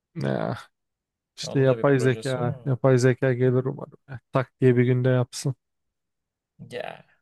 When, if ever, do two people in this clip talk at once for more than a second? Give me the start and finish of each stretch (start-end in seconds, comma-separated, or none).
1.5-2.7